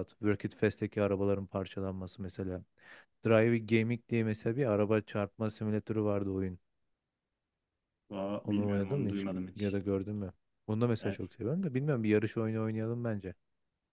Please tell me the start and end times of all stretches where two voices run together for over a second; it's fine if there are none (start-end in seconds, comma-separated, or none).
8.4-9.8